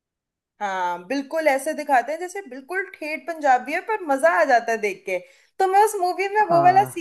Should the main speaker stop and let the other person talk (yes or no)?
no